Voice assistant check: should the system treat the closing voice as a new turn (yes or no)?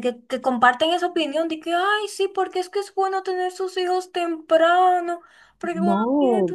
no